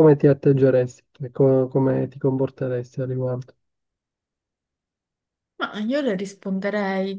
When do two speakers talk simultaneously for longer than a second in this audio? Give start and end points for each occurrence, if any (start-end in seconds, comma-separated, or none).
none